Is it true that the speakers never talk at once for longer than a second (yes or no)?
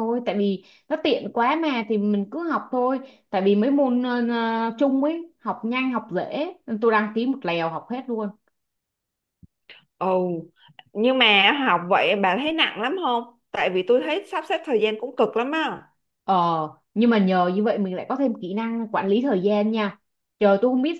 yes